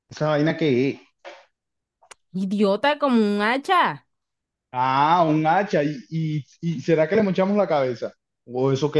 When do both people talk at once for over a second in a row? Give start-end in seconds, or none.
none